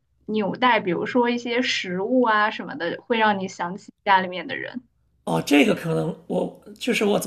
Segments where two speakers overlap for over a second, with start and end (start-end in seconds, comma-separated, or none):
none